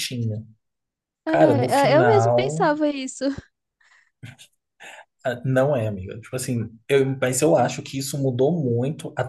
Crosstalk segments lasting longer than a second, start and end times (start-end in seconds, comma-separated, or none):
1.3-2.7